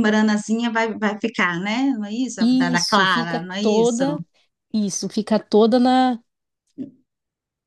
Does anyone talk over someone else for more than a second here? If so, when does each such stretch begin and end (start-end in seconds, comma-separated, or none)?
2.4-4.0